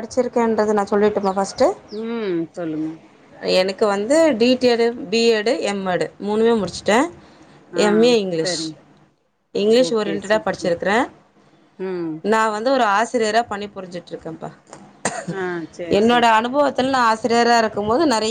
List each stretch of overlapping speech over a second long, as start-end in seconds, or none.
none